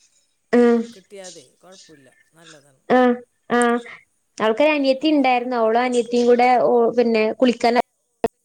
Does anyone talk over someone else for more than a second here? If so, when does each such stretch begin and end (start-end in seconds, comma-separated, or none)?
none